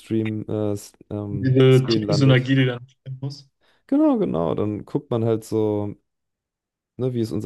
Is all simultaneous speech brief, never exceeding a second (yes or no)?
no